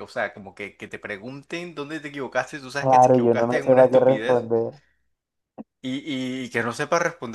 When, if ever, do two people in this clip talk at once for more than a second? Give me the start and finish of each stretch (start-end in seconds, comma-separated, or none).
2.8-4.5